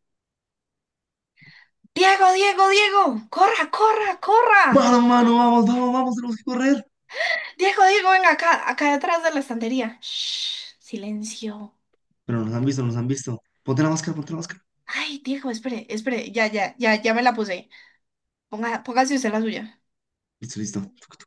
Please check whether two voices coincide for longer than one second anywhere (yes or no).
no